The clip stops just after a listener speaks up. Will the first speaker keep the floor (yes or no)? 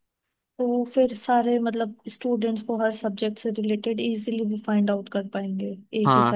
no